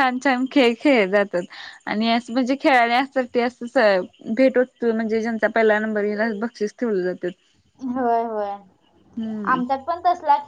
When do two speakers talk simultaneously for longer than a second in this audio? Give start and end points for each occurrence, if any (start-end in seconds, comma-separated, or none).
none